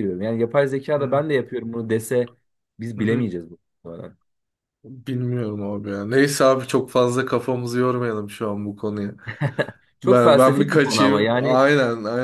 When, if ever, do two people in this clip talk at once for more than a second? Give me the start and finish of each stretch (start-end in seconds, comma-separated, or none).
10.0-11.7